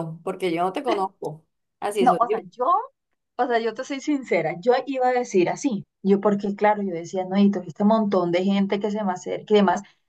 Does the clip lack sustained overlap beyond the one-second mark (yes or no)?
yes